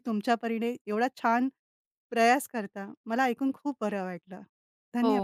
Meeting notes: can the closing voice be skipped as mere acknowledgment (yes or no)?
no